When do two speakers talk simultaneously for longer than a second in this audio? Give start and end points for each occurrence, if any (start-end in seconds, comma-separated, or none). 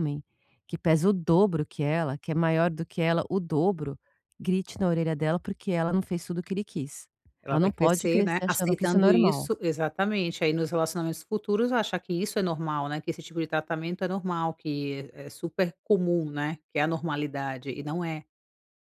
7.5-9.5